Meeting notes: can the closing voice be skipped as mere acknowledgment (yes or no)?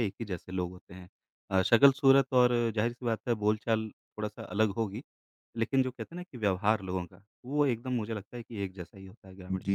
no